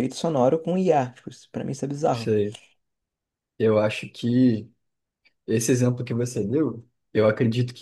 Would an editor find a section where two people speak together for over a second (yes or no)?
no